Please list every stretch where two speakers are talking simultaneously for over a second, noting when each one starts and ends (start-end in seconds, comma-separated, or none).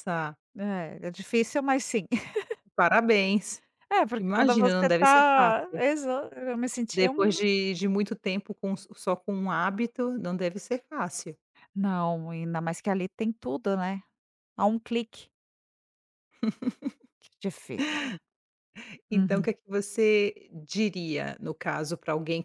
4.2-5.8